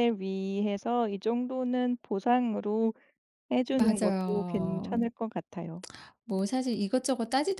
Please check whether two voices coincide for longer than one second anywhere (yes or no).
yes